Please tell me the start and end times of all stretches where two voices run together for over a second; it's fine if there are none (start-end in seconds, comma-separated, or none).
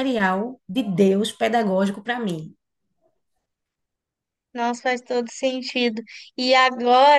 none